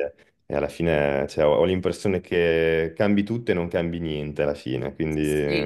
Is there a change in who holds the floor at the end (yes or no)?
yes